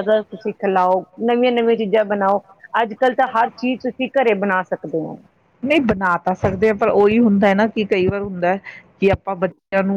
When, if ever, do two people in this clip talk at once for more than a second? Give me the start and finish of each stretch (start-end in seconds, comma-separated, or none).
none